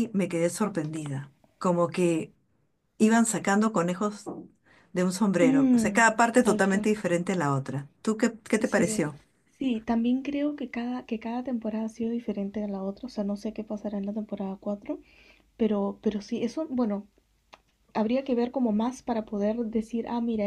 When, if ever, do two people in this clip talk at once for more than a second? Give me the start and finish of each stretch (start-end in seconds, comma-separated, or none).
5.4-6.9